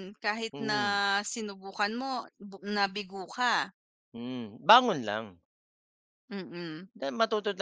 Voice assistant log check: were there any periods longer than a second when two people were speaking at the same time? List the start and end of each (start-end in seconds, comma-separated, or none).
none